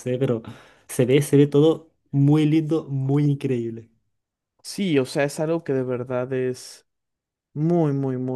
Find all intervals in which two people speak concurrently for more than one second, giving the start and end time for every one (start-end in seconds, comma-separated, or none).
none